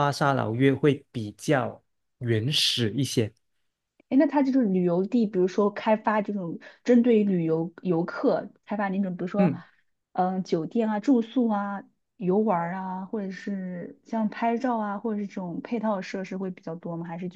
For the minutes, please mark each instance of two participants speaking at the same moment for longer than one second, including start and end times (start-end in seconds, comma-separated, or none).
none